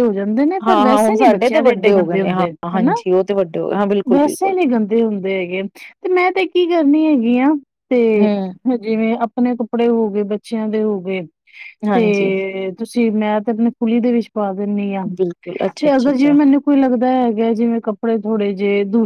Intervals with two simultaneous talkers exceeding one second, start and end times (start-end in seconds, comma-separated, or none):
0.7-2.9